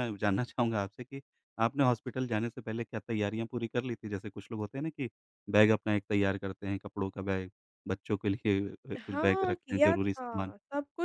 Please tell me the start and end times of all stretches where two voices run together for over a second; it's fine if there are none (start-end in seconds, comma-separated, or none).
9.0-10.5